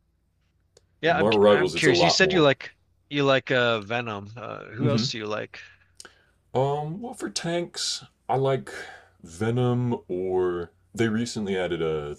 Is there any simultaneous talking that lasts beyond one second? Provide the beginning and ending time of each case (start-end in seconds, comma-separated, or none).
1.1-2.5